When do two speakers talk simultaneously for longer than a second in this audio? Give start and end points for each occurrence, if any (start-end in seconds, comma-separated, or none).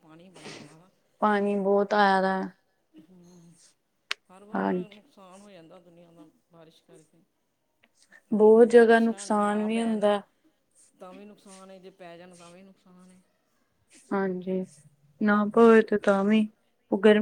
8.6-10.1